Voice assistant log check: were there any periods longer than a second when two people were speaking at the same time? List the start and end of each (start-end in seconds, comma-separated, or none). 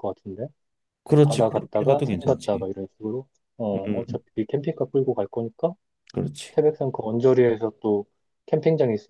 1.2-2.7